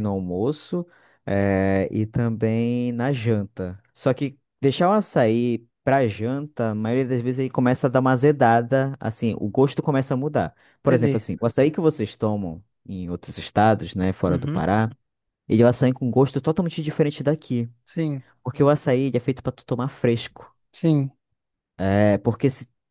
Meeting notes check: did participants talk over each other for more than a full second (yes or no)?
no